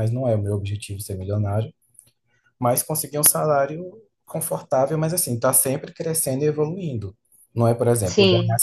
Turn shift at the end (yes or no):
no